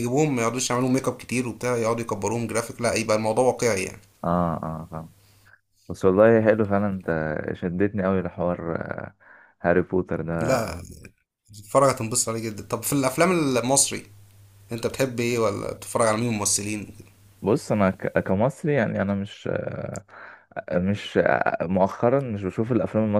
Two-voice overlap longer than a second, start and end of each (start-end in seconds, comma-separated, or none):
none